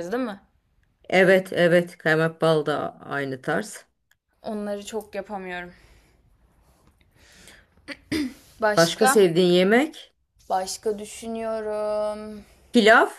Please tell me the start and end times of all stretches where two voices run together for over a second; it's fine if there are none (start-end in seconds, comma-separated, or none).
none